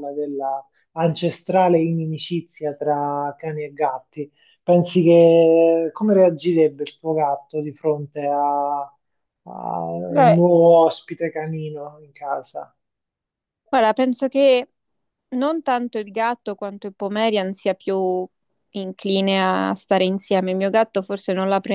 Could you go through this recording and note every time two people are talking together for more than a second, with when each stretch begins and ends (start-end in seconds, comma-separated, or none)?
none